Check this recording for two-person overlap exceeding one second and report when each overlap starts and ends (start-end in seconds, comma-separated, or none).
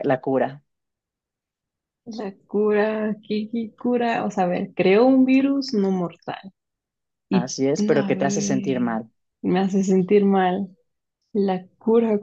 7.3-8.9